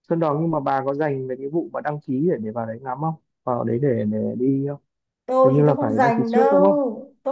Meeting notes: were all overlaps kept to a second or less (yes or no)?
no